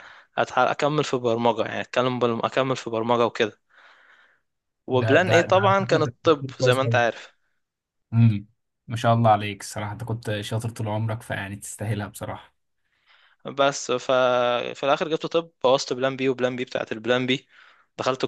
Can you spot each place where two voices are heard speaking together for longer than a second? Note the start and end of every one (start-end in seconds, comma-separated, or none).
4.9-7.0